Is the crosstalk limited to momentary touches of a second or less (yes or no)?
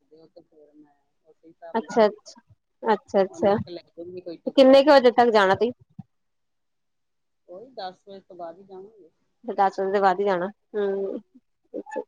no